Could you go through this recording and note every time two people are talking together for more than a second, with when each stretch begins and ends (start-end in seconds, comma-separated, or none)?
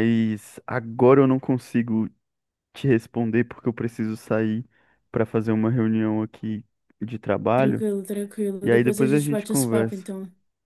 8.6-10.1